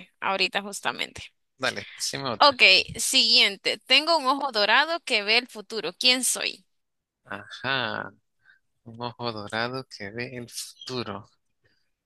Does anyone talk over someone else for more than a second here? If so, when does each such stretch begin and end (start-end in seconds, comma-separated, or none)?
none